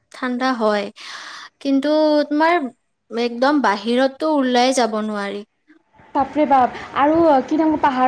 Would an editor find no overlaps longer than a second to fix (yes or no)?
yes